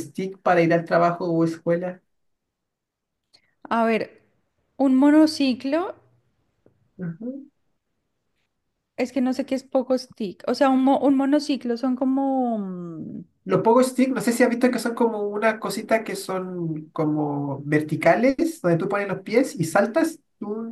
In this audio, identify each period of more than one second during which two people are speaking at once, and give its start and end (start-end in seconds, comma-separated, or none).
none